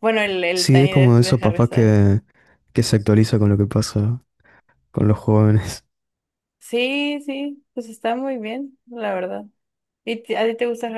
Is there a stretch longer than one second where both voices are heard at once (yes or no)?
yes